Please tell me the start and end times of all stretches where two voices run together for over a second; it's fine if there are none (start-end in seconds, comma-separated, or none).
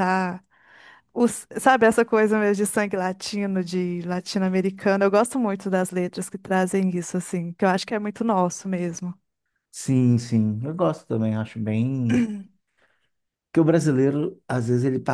none